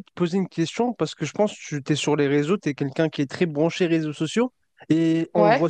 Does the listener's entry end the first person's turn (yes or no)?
no